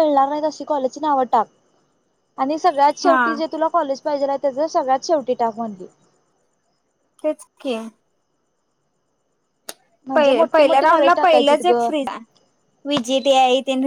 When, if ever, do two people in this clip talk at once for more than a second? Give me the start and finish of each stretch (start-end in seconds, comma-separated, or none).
10.5-11.9